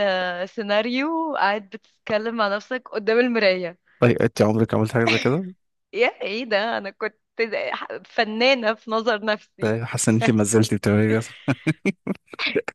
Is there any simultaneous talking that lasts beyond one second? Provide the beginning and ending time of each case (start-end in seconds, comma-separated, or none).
none